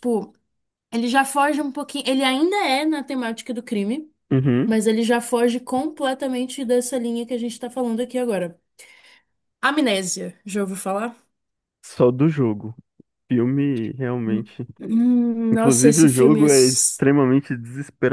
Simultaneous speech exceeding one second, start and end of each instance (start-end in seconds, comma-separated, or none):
15.5-17.0